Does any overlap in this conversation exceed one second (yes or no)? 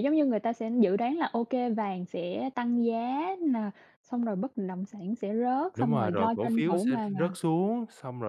yes